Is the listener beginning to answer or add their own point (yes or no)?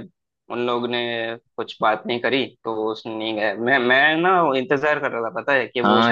yes